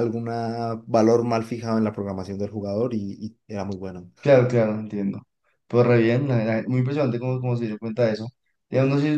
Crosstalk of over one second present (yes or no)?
no